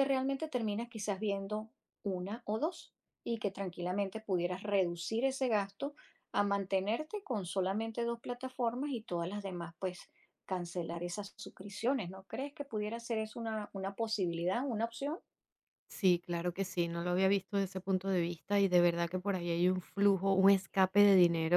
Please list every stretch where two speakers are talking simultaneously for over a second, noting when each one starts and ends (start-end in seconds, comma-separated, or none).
none